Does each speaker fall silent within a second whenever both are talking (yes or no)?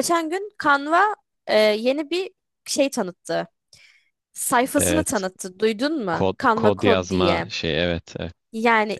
no